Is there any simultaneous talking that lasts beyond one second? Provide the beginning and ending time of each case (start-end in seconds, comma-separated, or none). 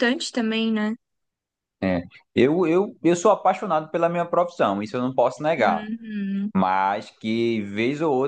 none